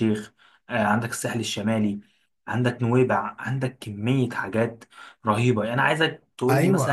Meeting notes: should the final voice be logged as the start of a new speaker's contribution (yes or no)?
yes